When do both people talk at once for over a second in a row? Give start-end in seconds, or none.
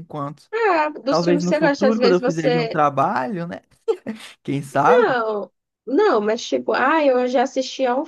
1.1-2.8